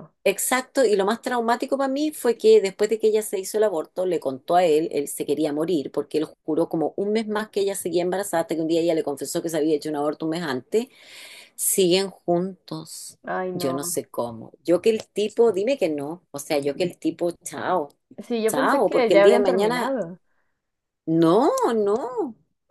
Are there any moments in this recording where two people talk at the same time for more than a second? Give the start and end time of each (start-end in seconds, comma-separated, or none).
18.5-20.0